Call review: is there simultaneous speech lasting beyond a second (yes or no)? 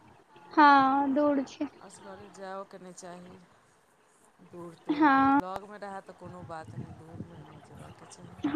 no